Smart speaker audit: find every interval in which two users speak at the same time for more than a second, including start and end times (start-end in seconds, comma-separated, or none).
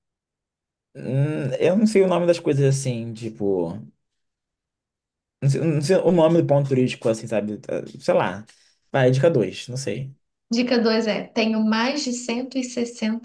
none